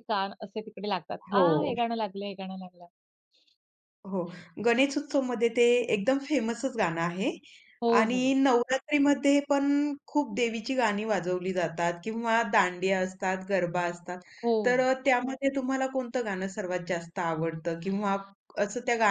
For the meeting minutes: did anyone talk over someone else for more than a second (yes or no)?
no